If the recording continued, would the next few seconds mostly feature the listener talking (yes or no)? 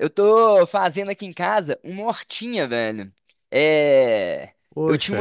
no